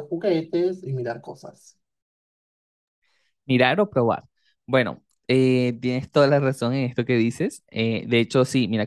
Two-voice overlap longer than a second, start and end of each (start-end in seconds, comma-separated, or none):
none